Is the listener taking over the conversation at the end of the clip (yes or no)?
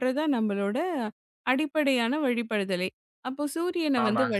no